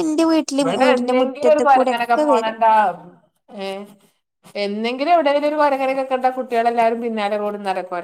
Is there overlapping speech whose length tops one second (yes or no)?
yes